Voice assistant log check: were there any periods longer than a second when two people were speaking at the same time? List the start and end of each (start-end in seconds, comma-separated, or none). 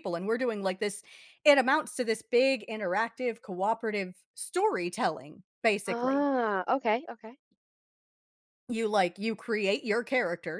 none